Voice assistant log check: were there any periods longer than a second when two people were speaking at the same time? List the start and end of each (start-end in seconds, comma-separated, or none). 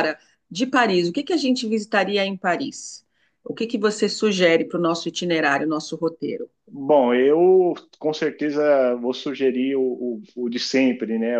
none